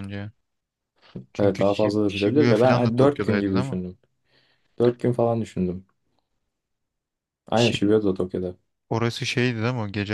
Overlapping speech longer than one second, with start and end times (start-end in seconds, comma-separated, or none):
1.4-3.8